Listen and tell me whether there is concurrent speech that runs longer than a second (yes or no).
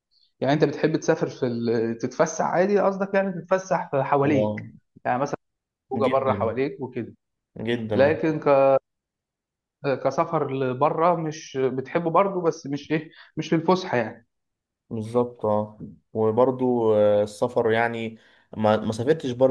no